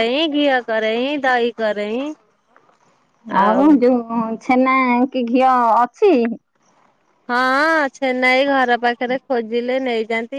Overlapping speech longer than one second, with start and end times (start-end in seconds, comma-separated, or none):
none